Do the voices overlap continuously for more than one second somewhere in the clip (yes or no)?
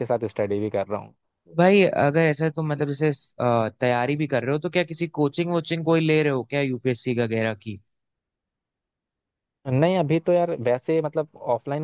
no